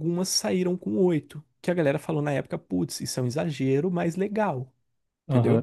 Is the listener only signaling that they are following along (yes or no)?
no